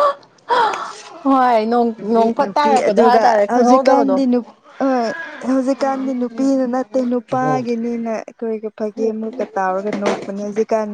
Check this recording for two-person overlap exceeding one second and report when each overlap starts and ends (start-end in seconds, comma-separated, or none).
2.0-4.2